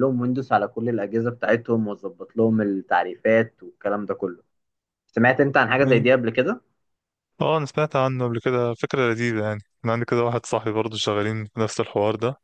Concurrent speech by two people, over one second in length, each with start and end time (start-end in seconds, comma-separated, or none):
none